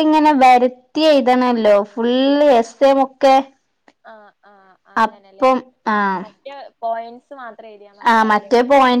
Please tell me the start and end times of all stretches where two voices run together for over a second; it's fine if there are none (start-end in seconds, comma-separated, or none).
none